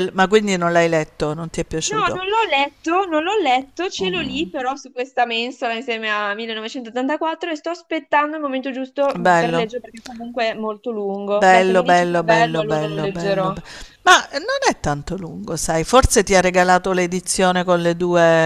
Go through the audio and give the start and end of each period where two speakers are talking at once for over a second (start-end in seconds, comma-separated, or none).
11.4-13.5